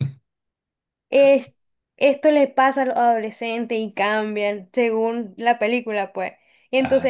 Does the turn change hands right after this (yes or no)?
no